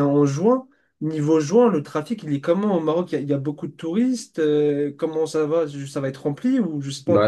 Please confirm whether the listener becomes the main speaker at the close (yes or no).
yes